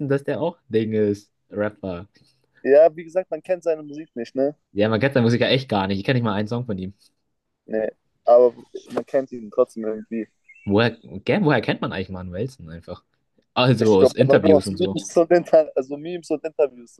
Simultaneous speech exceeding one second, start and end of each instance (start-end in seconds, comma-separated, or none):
13.8-15.0